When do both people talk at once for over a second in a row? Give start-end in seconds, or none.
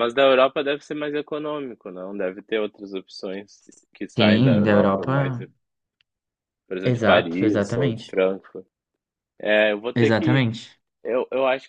4.2-5.4, 6.9-8.2